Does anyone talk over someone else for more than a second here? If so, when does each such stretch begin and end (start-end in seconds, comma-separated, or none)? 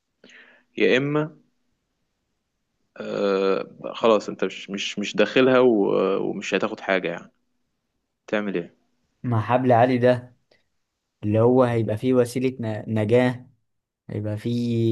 none